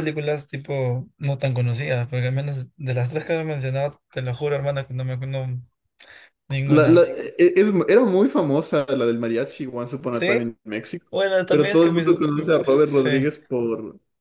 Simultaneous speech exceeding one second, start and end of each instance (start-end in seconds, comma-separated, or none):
11.5-13.1